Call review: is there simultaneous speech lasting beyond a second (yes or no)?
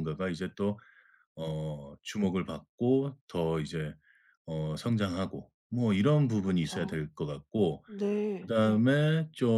no